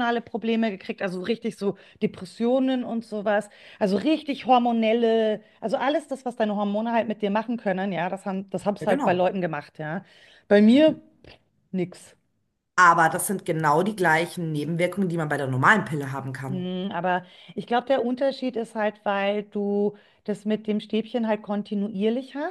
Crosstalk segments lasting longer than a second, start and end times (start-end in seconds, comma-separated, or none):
none